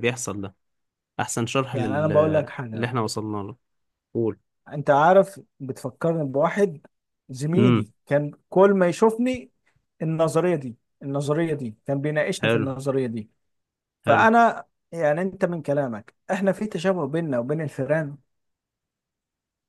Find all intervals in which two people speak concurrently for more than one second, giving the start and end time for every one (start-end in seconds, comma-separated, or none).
none